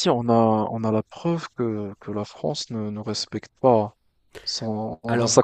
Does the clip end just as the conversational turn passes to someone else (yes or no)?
no